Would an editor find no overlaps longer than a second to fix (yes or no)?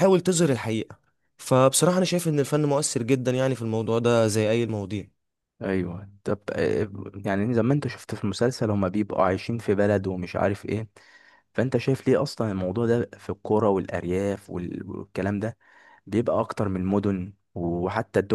yes